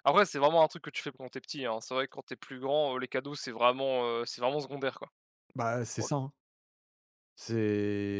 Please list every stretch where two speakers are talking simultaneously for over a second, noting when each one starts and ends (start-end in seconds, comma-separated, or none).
none